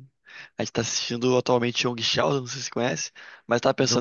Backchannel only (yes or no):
yes